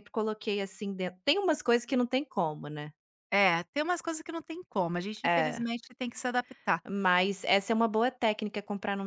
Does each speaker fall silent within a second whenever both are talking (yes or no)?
yes